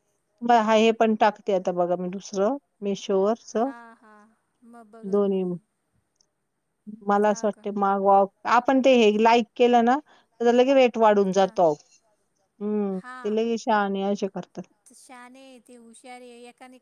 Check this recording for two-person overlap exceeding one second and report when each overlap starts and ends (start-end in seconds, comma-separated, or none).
none